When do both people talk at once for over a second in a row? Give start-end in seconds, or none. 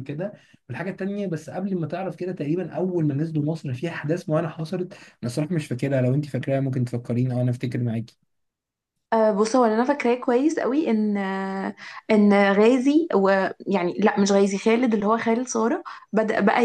none